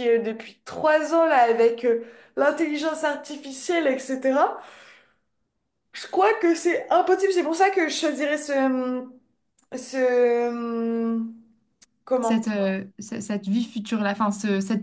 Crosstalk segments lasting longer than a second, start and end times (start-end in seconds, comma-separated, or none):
none